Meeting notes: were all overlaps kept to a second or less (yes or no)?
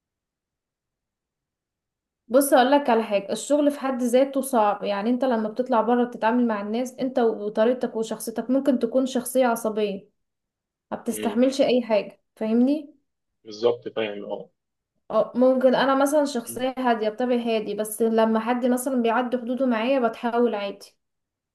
yes